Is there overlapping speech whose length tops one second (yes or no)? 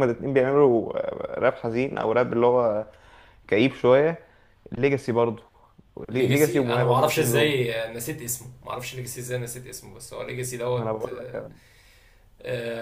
yes